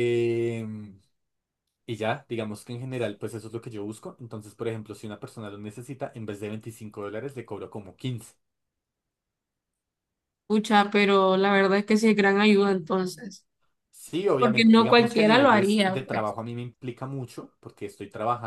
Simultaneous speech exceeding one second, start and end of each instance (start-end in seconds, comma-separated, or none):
14.4-16.3